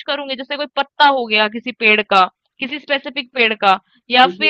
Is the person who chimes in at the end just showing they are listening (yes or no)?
yes